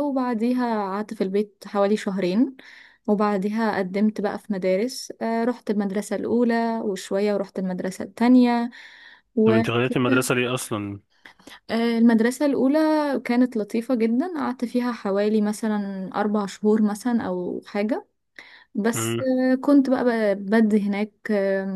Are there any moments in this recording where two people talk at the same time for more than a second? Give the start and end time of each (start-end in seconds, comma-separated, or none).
none